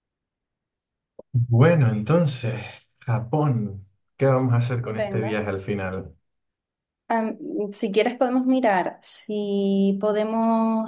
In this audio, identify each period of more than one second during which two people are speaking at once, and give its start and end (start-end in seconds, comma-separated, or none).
none